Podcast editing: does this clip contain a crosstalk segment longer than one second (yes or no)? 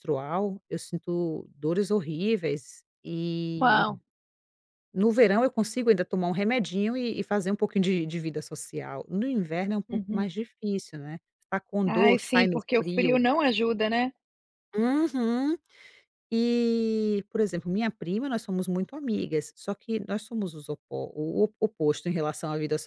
yes